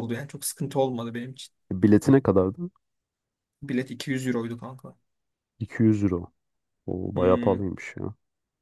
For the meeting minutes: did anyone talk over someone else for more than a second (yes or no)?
no